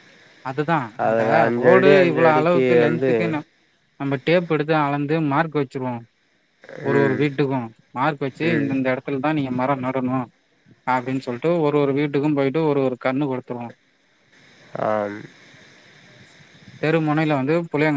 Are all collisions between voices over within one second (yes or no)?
no